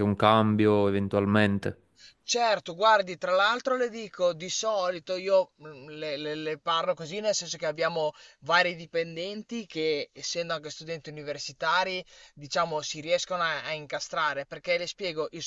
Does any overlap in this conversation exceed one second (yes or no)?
no